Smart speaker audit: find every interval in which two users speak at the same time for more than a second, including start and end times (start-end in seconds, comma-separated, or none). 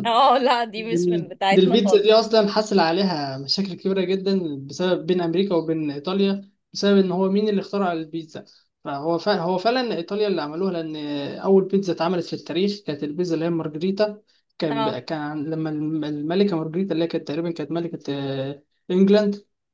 0.8-2.2